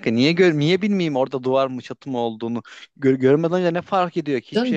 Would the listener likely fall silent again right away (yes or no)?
no